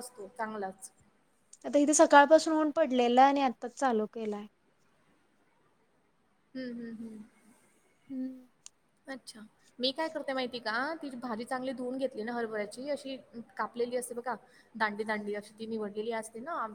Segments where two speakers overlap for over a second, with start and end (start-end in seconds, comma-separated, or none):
none